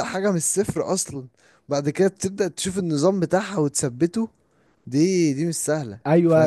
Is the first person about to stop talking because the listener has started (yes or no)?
yes